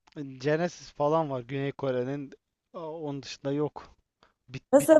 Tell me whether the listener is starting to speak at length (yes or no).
no